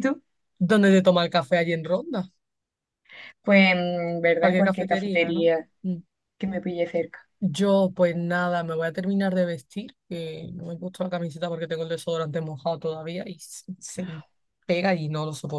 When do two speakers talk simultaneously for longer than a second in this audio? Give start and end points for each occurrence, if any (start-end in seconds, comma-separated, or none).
4.4-5.7